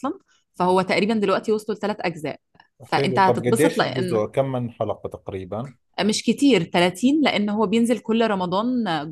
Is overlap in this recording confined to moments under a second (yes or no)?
no